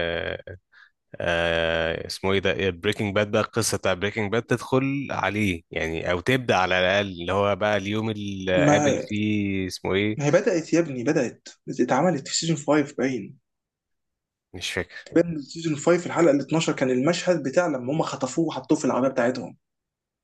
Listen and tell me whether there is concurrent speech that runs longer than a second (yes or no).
no